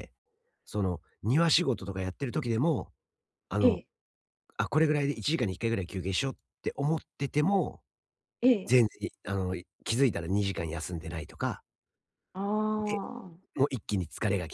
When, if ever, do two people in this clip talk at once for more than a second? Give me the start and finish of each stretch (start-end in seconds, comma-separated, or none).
none